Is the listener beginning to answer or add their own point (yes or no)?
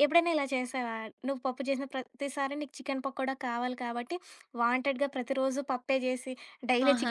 yes